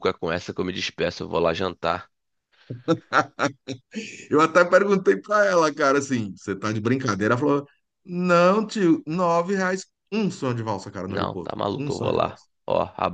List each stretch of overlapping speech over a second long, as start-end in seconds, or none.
11.1-12.4